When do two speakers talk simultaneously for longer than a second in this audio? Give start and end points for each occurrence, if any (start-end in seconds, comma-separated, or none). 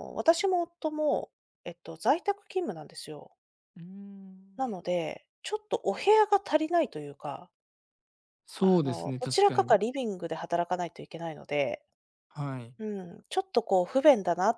8.6-9.8